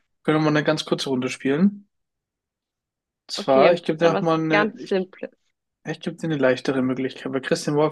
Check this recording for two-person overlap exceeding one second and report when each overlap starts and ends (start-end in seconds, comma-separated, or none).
3.4-5.0